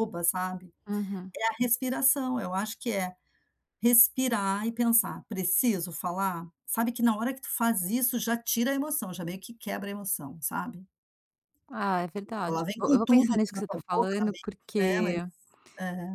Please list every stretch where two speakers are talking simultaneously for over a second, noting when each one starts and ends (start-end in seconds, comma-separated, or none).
12.5-15.2